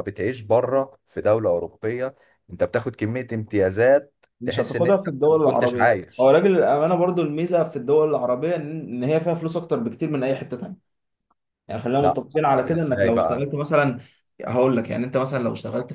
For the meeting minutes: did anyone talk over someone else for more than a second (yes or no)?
yes